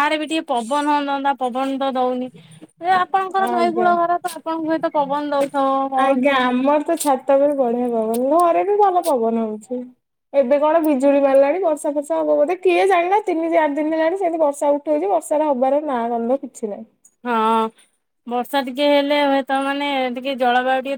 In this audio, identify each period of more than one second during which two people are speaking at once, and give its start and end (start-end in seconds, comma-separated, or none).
none